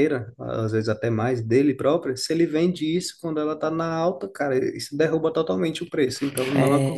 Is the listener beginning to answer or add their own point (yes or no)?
yes